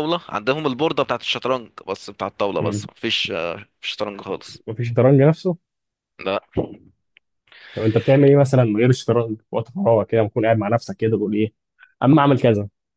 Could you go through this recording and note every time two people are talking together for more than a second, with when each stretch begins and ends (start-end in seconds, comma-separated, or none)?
none